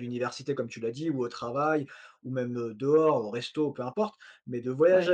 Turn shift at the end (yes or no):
no